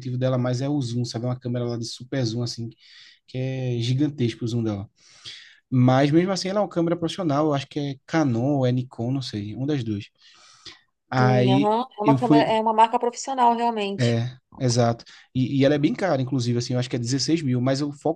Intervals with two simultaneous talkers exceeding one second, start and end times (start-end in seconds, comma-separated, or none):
11.2-12.5